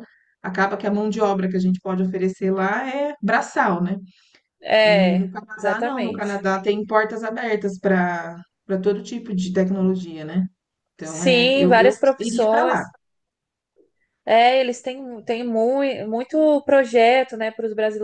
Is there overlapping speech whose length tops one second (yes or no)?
yes